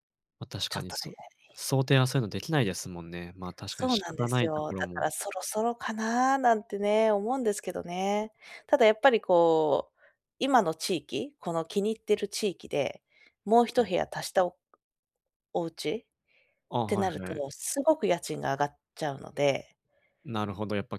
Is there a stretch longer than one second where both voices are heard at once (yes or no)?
yes